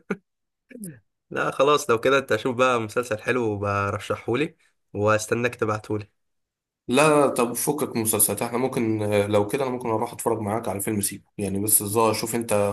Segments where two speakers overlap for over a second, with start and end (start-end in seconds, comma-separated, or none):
none